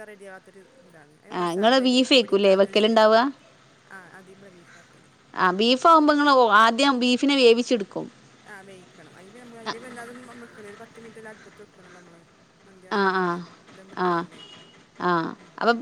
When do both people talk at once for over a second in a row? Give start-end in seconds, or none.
1.4-3.1